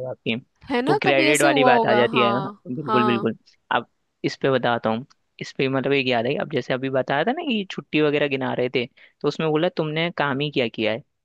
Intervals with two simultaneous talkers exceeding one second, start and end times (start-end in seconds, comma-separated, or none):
0.9-3.3